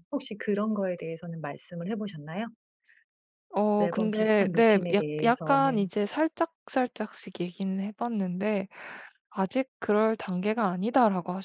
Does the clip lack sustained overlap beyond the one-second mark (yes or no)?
no